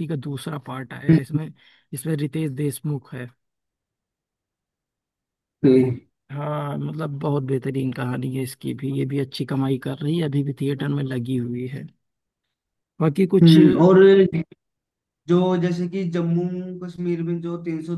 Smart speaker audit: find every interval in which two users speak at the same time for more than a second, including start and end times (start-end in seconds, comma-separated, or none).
none